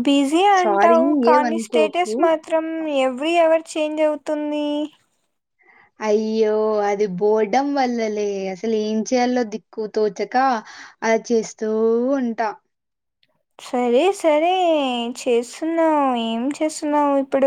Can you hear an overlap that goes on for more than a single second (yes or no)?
yes